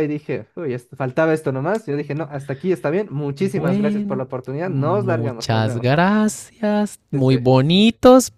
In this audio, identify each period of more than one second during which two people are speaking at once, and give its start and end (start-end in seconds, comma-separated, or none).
3.4-5.9